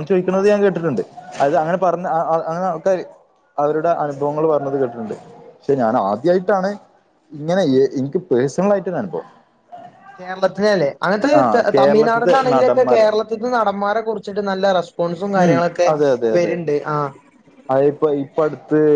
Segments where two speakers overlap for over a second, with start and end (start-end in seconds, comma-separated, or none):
11.4-13.1